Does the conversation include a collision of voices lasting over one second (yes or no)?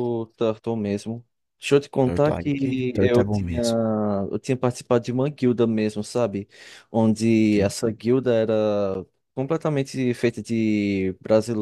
yes